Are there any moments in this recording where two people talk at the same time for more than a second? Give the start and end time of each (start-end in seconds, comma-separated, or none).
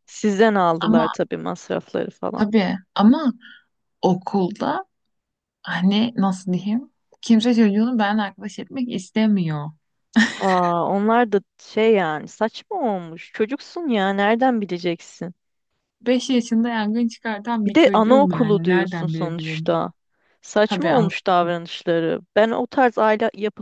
17.7-19.8